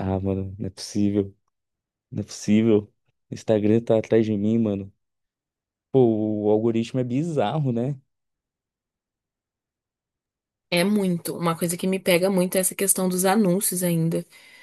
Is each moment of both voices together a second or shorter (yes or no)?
yes